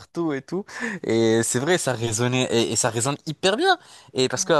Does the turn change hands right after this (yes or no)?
no